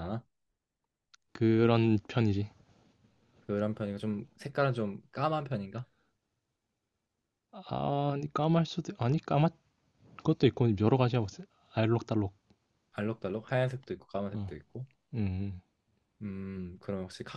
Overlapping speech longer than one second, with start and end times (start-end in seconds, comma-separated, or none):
none